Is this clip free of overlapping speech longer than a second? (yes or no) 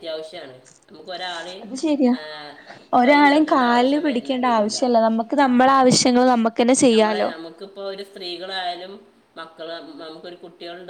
no